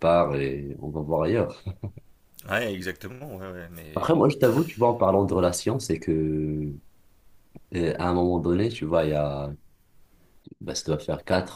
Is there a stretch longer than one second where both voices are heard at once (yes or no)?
no